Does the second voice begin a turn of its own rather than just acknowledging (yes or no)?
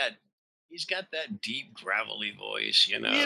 yes